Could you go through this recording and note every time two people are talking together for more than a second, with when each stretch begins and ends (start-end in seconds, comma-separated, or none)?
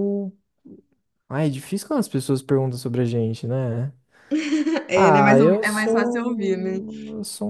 4.9-6.8